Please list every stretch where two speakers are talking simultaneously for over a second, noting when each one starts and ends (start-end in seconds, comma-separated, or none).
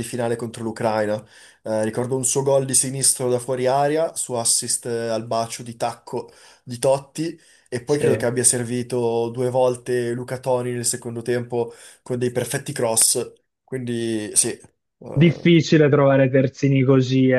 none